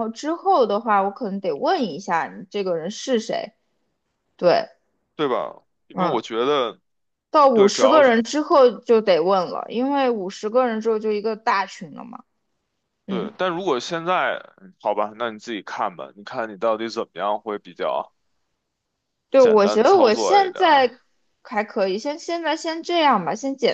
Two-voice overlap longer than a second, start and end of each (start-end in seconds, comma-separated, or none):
19.4-20.9